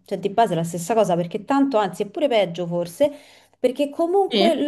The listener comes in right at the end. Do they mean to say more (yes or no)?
no